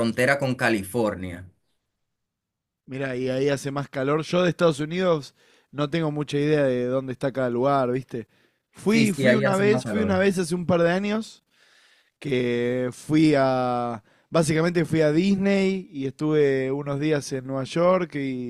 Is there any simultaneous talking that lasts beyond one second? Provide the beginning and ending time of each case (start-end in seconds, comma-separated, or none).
8.8-10.2